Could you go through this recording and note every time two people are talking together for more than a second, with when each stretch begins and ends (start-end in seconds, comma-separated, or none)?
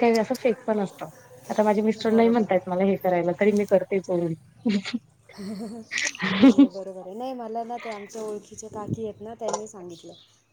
none